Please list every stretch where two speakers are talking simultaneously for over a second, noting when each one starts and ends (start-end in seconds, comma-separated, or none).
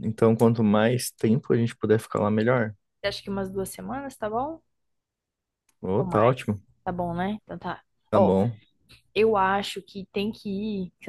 none